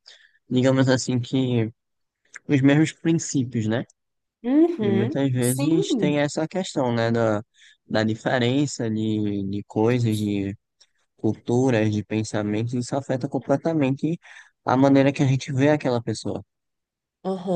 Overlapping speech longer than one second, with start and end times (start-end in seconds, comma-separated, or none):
4.8-6.2